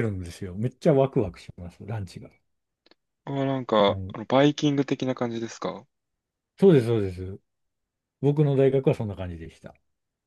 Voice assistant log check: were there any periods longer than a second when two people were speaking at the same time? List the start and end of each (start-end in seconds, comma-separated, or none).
none